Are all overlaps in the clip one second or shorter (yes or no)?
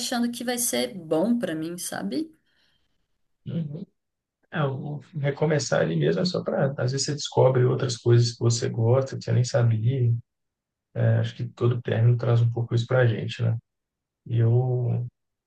yes